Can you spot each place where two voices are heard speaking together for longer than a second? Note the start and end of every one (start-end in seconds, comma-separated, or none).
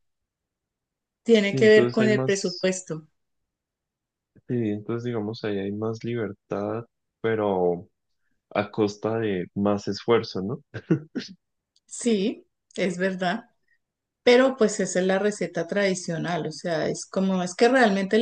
1.4-2.7